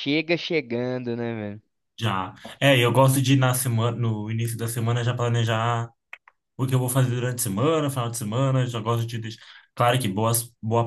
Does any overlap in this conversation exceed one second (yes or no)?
no